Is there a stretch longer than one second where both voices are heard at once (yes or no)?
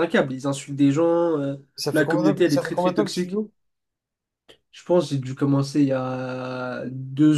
yes